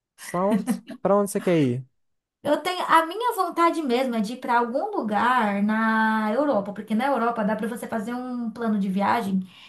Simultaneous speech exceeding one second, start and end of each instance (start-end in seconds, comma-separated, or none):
none